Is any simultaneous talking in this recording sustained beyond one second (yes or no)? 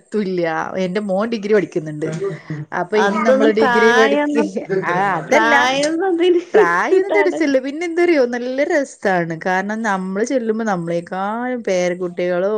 yes